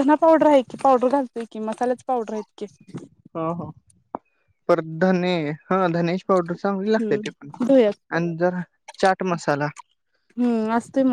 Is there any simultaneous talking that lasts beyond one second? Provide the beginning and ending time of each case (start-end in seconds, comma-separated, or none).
none